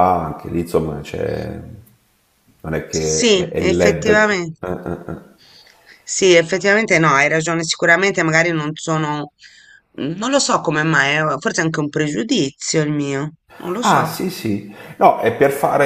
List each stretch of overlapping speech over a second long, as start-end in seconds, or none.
2.9-4.6